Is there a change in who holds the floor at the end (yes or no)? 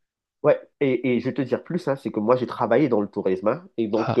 no